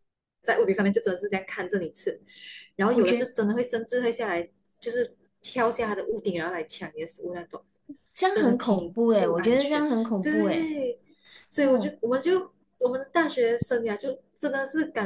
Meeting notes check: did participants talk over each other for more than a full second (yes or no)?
yes